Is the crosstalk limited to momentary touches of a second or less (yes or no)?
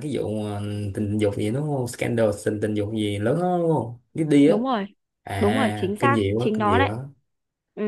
no